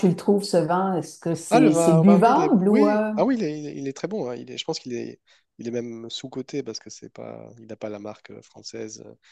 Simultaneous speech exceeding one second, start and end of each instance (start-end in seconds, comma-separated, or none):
1.5-3.1